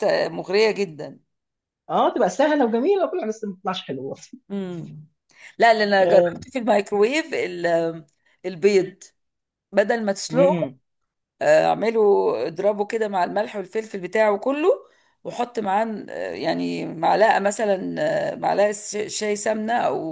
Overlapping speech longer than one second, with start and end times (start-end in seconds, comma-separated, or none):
none